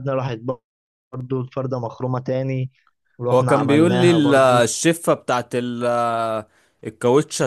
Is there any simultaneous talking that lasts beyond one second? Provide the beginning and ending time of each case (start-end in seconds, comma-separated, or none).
3.3-4.7